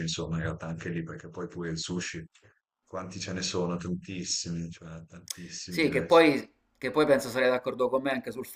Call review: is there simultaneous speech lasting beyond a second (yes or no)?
no